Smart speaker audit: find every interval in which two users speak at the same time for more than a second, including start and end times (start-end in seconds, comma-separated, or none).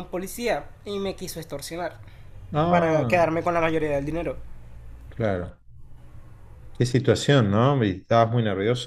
none